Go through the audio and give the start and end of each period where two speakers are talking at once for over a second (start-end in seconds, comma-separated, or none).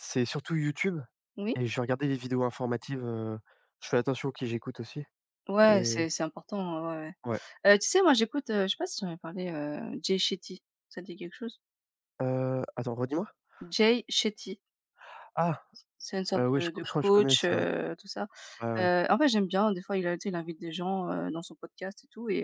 16.4-17.6